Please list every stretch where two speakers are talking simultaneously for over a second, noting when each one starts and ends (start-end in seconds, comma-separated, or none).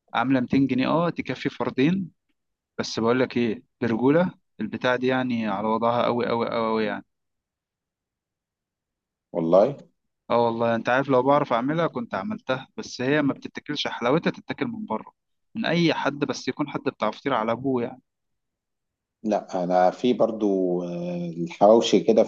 none